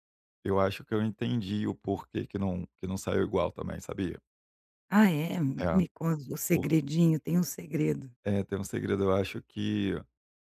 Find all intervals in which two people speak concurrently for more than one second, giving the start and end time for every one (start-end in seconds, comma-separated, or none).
none